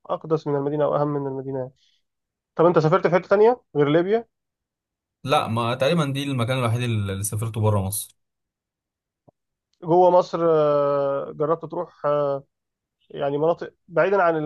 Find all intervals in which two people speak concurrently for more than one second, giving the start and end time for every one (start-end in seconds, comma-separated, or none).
none